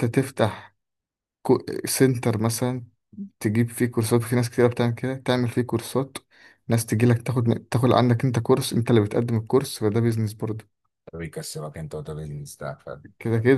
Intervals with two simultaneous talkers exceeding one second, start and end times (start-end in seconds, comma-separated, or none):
none